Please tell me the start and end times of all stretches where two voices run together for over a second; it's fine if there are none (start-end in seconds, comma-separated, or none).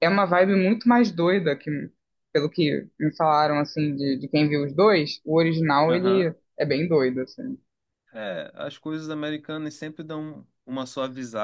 none